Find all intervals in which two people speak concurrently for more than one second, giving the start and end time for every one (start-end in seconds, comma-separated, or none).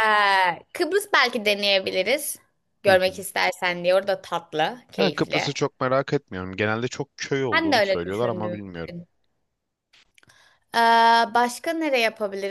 7.5-9.0